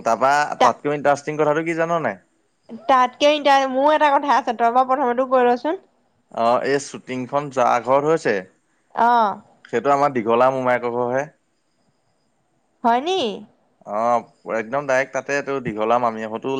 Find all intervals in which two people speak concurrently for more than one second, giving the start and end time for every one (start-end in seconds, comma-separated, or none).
none